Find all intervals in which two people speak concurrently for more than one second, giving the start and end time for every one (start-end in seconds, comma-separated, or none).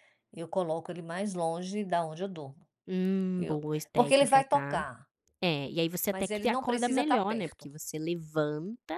3.4-4.8, 6.1-7.7